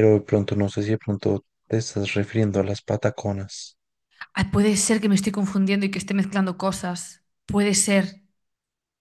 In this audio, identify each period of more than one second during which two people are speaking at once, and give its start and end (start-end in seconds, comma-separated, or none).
none